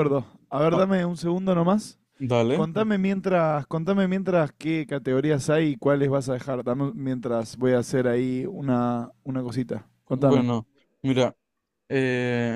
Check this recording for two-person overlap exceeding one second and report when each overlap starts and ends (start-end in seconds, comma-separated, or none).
none